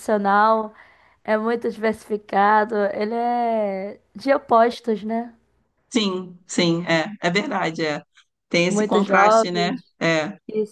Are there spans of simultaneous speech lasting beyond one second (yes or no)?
yes